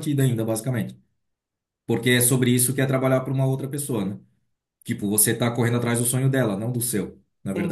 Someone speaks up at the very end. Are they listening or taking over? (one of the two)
taking over